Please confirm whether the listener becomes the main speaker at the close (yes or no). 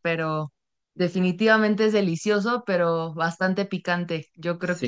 no